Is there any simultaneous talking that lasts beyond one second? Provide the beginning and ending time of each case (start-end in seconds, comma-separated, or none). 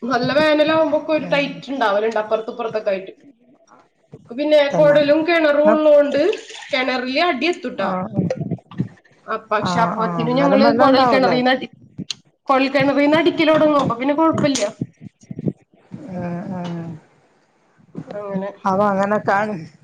9.7-11.4